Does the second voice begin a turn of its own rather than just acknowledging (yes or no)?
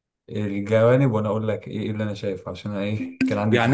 yes